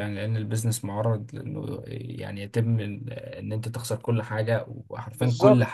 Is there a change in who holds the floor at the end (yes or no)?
yes